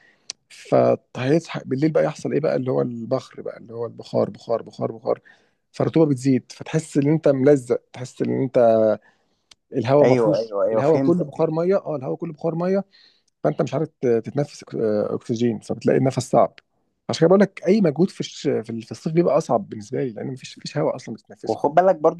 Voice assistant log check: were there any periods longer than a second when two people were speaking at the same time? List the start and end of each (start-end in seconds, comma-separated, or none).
10.0-11.4